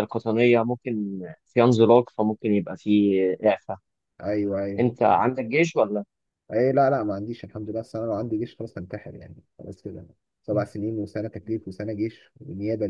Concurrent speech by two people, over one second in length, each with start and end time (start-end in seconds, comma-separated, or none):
none